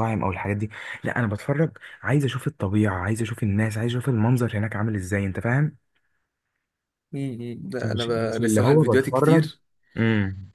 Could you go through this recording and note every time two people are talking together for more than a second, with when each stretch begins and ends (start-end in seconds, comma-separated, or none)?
7.8-9.5